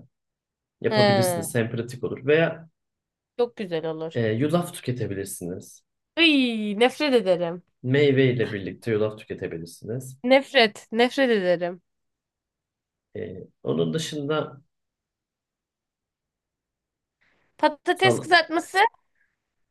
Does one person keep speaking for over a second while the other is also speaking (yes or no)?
no